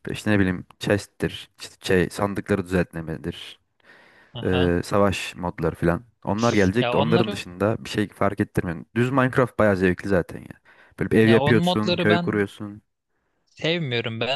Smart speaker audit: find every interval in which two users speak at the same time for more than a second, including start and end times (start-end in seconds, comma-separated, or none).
11.2-12.5